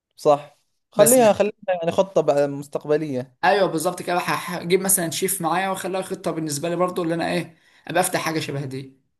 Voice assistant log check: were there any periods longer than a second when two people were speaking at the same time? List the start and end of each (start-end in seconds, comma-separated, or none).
none